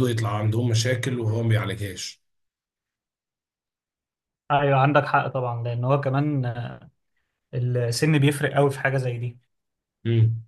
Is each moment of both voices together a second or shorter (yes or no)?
yes